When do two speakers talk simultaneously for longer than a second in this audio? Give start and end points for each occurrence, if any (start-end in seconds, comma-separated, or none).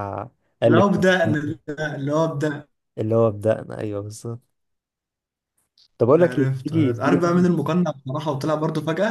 6.2-7.4